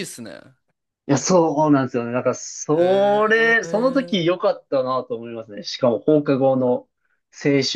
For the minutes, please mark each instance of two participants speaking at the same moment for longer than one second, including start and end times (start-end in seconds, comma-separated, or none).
2.8-4.2